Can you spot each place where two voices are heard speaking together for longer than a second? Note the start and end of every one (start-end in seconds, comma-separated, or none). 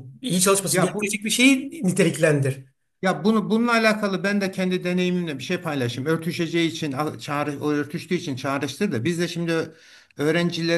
none